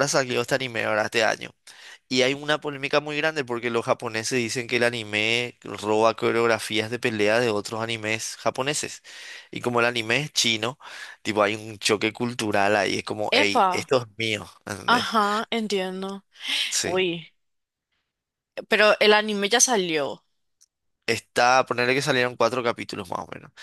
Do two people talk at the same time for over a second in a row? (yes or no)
no